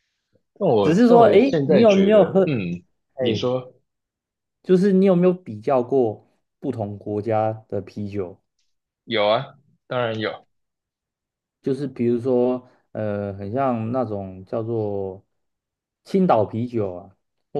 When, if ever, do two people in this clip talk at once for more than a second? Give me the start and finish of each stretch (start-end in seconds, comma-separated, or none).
0.8-2.5